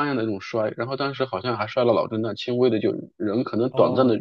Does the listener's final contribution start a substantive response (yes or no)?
no